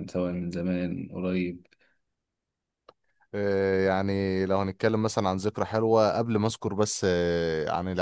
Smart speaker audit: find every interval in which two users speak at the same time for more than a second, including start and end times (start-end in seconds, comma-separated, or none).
none